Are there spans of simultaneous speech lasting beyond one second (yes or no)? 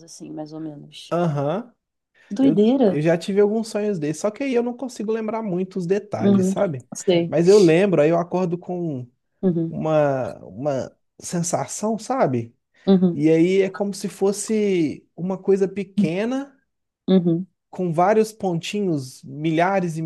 no